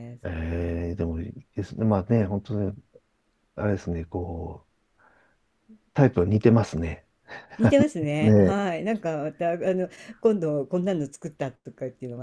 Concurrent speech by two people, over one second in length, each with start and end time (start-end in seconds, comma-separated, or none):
none